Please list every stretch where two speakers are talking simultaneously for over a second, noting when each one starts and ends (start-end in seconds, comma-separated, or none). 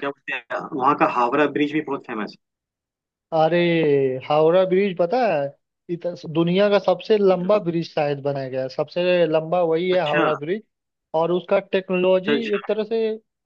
none